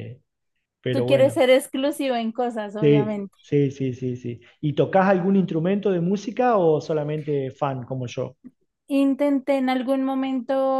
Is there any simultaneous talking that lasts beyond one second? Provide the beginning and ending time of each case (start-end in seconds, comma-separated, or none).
none